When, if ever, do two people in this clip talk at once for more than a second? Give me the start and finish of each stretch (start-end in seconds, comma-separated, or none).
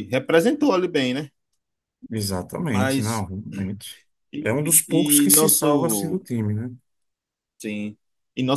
4.4-6.2